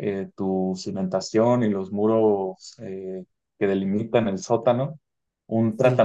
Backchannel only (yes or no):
yes